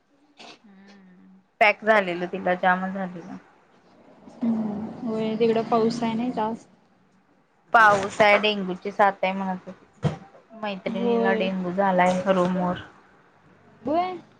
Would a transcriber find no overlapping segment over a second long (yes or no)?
yes